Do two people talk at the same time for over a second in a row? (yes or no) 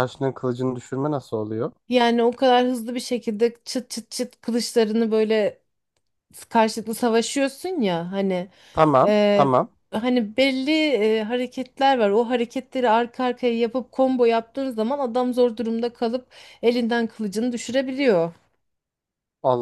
no